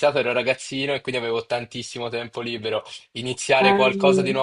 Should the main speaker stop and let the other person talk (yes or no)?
no